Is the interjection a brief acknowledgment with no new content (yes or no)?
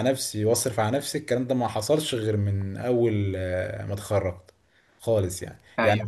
no